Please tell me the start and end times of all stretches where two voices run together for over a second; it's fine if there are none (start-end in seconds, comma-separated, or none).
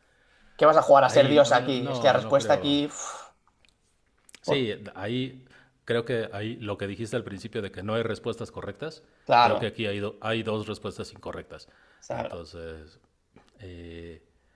1.0-2.8